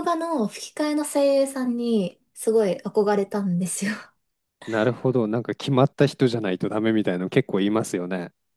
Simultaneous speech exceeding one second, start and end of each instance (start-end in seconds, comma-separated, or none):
none